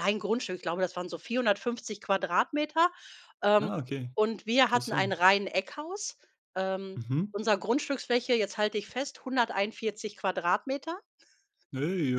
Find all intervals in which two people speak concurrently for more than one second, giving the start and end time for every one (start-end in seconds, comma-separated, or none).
none